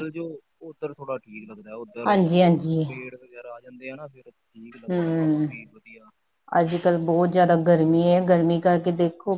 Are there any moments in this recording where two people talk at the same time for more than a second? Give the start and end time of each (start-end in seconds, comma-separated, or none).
none